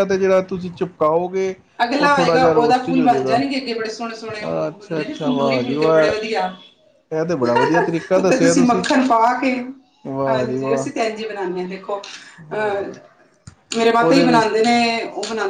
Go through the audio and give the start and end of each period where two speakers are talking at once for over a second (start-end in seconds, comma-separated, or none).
2.0-3.4, 4.7-6.1